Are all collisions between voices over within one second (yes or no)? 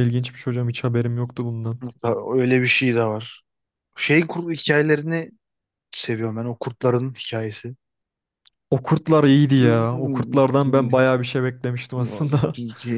yes